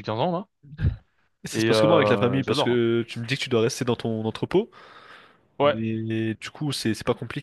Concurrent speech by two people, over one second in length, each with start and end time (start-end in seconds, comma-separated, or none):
1.5-2.8